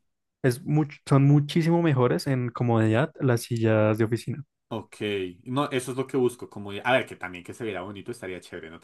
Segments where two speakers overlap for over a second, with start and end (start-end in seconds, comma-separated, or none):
none